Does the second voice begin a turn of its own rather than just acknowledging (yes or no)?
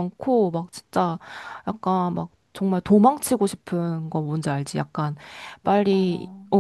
no